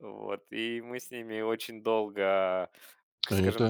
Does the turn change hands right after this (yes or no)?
yes